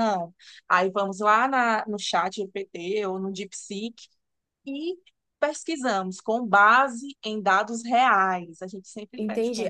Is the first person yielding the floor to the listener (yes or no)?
yes